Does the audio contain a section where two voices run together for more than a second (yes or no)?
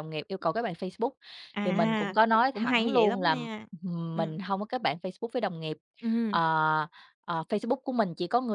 yes